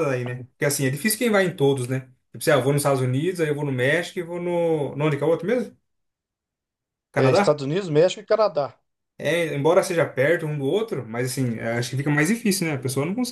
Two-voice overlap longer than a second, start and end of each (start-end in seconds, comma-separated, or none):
none